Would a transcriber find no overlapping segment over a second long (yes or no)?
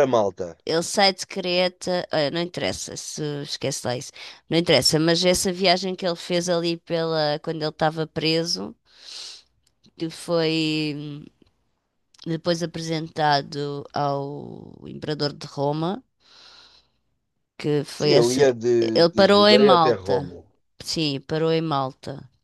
no